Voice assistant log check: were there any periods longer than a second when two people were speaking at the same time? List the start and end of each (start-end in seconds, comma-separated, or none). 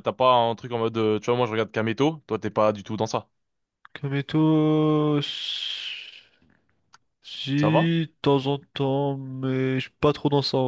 none